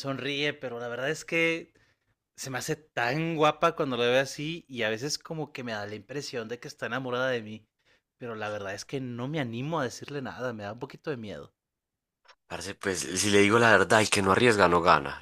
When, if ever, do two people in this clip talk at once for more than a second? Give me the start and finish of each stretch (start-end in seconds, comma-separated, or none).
none